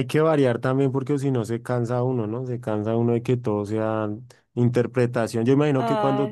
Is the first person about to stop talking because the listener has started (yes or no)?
no